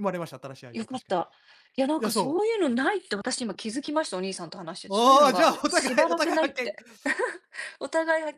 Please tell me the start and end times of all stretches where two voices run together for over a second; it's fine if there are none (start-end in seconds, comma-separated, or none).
4.9-6.8